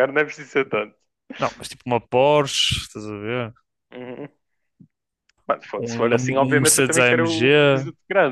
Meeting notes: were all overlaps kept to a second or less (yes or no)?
no